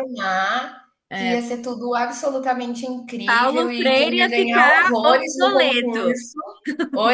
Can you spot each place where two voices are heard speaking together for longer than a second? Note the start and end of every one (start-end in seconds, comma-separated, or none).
3.2-6.2